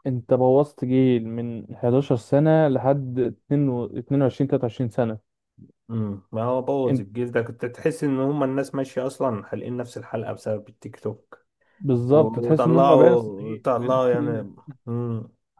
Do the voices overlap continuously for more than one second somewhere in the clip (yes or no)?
yes